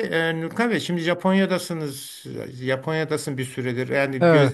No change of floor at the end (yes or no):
yes